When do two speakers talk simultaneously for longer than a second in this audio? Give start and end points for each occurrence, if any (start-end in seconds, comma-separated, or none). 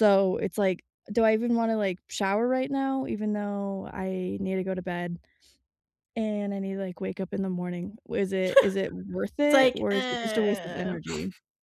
9.4-11.0